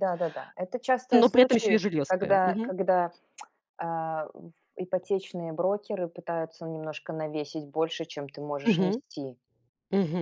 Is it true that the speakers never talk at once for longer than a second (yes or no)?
no